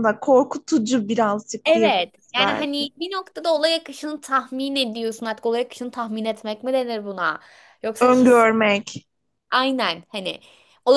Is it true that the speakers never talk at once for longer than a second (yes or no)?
no